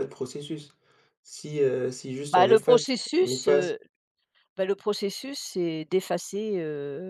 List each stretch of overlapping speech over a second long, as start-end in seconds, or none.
2.3-3.8